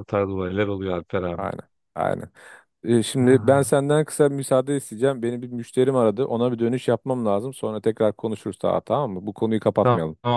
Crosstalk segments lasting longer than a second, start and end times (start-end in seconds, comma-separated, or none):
none